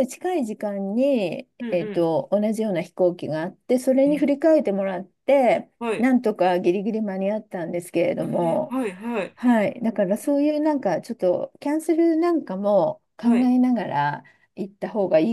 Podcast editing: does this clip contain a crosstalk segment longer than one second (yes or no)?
no